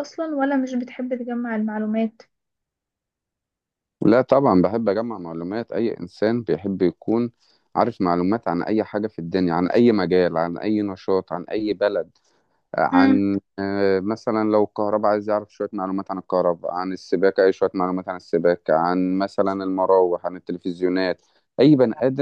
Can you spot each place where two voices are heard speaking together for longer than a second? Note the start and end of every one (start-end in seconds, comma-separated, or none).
none